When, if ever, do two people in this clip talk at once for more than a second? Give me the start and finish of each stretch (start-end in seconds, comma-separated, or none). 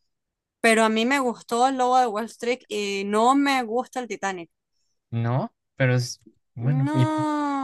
none